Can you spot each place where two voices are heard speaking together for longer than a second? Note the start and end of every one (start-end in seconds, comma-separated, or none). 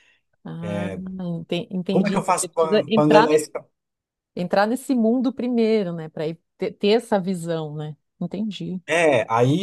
1.9-3.5